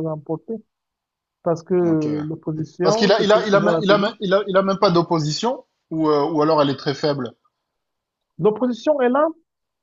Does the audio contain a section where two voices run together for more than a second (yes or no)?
yes